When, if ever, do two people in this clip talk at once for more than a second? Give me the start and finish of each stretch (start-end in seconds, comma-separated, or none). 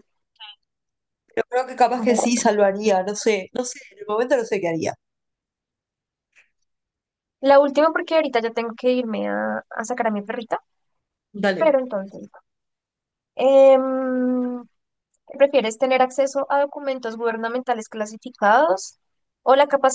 none